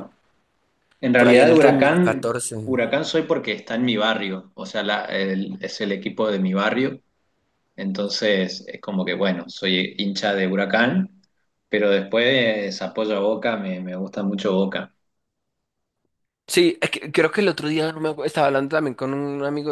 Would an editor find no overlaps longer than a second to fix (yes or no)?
no